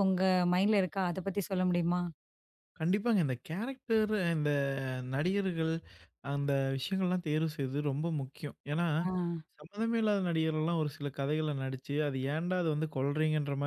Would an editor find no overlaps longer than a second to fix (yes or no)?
yes